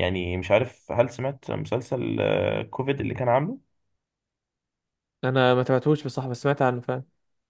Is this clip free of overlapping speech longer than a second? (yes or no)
yes